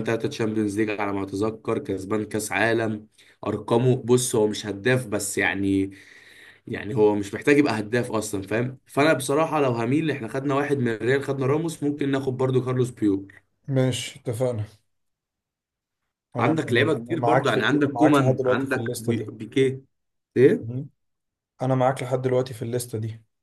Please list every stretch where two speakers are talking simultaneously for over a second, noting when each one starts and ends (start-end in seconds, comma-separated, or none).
16.4-19.3